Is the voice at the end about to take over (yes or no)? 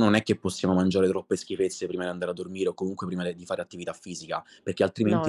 no